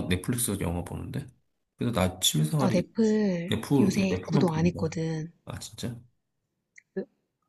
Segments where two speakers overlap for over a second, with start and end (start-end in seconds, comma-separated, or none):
3.5-4.9